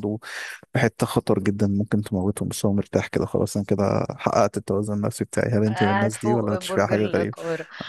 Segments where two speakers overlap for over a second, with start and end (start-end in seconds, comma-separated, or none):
5.7-7.3